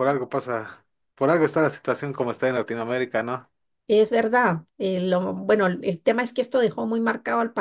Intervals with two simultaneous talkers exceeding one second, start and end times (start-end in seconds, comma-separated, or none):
none